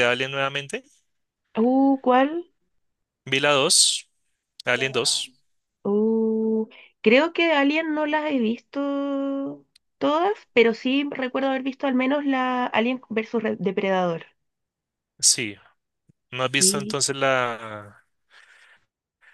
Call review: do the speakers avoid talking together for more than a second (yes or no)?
yes